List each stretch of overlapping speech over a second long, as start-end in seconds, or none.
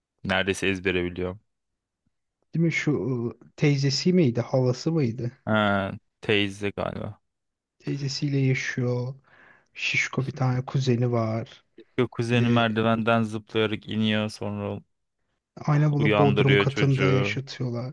16.0-17.4